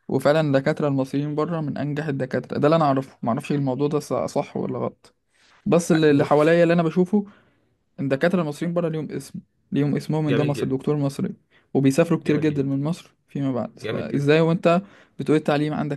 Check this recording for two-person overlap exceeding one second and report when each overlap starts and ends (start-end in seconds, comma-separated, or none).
none